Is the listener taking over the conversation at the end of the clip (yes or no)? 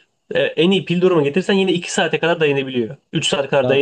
no